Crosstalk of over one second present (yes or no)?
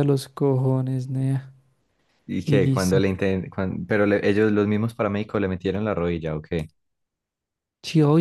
no